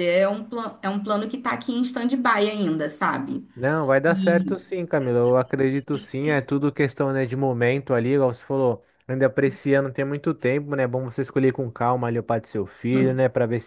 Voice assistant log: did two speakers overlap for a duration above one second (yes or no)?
no